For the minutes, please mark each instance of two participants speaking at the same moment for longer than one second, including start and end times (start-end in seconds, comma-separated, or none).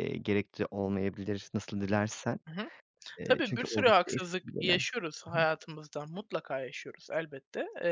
3.2-4.8